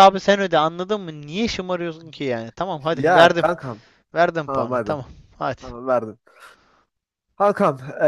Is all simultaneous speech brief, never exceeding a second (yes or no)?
yes